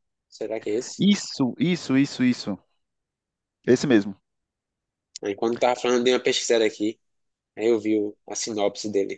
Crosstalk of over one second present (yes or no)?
no